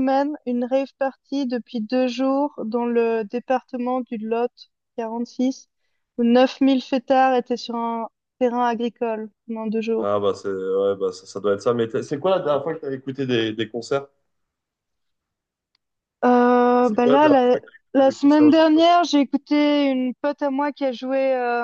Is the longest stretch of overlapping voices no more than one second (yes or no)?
no